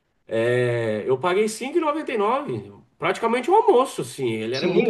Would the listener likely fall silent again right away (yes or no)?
no